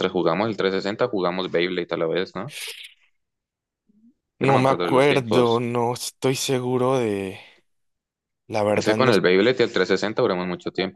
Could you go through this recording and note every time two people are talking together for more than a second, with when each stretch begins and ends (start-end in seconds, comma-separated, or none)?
4.4-5.6